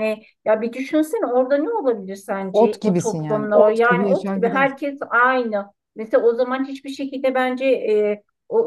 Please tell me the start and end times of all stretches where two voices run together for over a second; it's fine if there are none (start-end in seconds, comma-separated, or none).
2.5-4.7